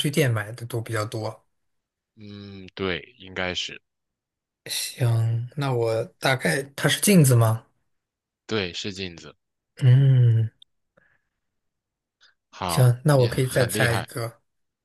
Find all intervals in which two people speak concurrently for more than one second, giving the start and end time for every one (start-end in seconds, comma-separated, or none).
12.7-14.1